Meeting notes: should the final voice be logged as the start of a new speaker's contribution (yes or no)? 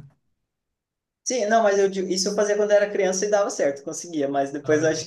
no